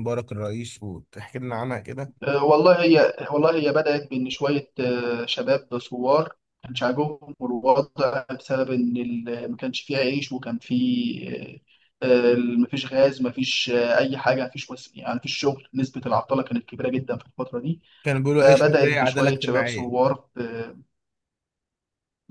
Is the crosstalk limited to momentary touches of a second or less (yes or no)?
no